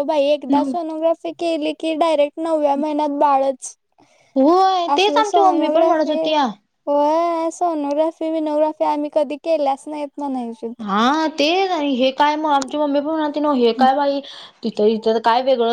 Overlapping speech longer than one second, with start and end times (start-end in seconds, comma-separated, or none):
5.0-6.2